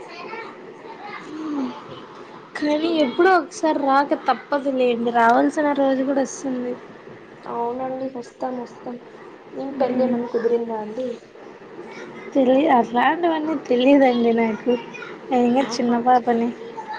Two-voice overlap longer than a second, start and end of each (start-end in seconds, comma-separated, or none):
none